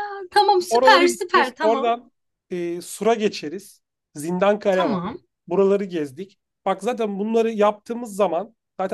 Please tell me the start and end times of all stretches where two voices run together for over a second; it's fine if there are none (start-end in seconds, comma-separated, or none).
0.7-1.9